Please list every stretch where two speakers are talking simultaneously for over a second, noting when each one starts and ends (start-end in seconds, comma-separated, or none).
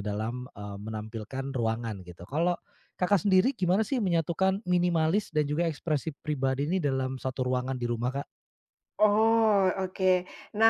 none